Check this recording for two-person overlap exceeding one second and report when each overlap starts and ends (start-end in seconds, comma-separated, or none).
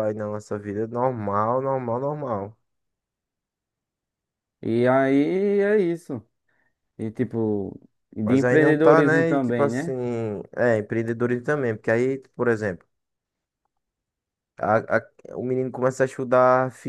8.2-9.9